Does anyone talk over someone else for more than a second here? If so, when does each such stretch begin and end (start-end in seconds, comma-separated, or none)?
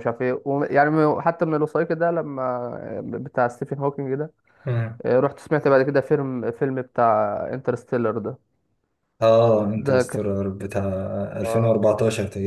none